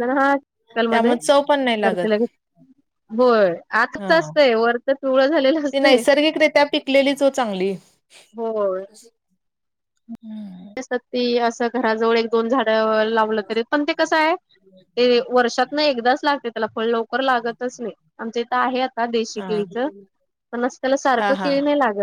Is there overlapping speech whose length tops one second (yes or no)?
yes